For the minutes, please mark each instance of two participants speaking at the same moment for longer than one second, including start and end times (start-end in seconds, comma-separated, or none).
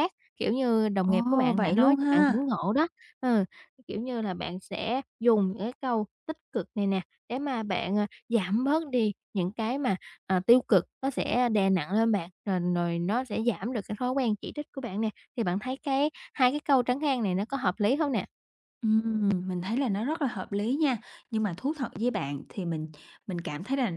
1.0-2.5